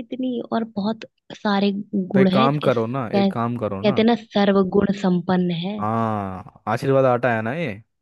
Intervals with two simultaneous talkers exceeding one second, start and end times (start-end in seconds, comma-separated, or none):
2.1-4.0